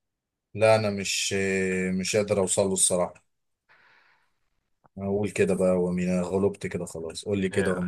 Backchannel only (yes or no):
no